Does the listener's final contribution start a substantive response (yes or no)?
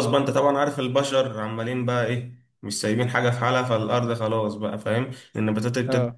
no